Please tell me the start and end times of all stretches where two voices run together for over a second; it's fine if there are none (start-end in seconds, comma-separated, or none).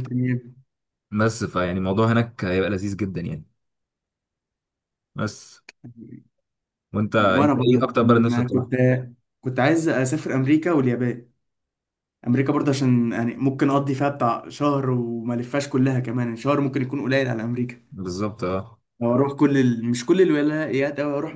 7.2-8.7